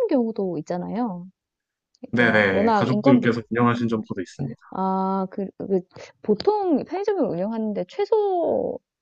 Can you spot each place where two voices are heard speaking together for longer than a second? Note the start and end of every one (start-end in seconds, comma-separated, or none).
2.2-3.4